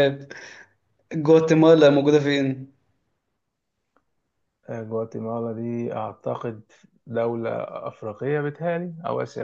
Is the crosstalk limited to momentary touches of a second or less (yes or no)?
yes